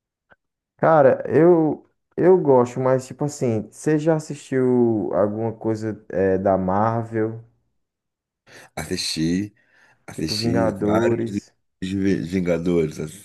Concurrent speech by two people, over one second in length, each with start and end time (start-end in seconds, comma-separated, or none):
10.1-11.4